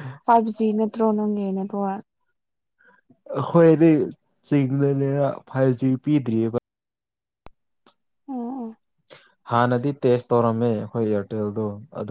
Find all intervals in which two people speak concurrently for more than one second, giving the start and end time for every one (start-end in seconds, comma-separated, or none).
none